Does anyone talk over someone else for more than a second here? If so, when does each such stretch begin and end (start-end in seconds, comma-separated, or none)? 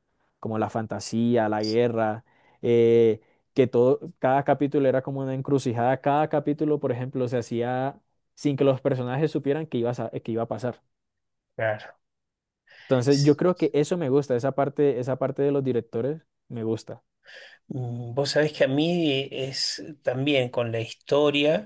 none